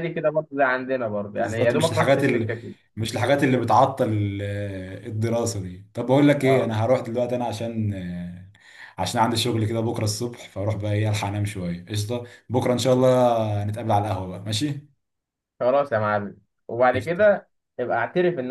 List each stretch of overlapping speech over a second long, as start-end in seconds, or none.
1.3-2.5